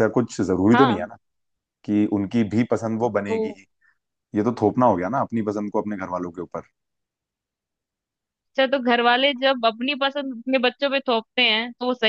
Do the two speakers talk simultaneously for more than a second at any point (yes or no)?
no